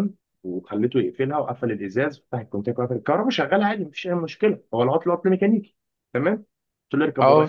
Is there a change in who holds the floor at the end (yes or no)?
no